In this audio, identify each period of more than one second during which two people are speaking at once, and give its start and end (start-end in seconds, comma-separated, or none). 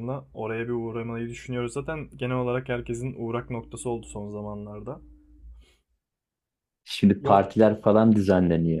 none